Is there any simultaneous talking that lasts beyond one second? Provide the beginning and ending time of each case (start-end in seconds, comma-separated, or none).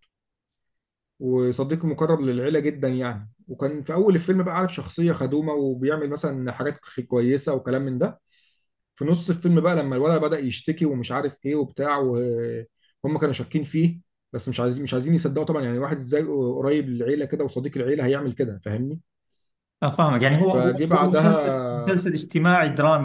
20.5-21.9